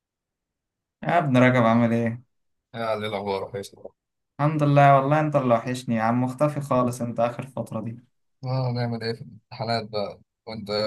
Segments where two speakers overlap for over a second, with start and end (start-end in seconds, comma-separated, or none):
none